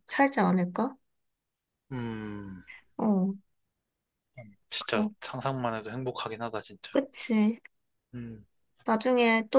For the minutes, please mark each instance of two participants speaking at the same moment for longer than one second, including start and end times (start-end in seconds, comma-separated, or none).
none